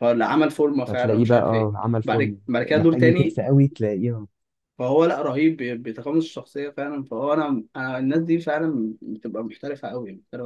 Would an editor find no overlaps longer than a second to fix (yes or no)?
no